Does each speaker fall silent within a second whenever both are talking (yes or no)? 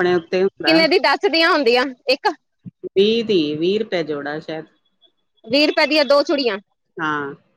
yes